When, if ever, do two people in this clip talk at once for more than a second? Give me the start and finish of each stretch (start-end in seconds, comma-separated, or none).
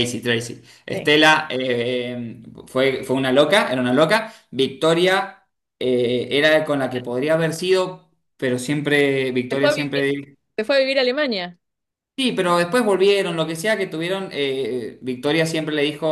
none